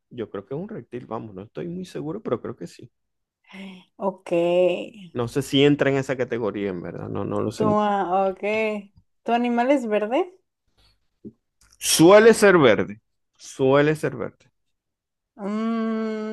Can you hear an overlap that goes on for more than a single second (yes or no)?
no